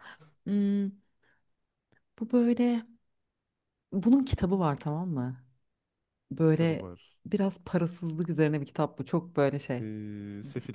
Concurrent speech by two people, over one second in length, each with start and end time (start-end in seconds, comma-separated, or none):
none